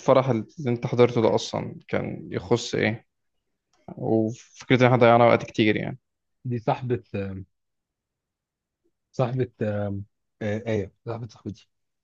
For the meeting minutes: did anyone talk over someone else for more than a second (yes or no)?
no